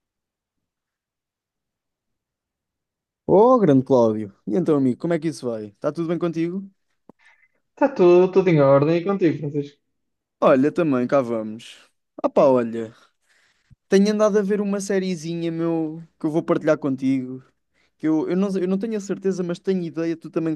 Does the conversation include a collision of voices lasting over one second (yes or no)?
no